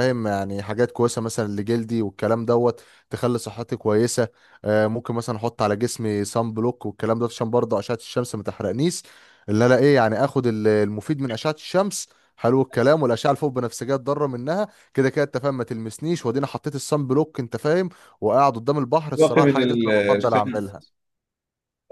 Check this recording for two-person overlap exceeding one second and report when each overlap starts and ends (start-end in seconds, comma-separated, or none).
19.1-20.8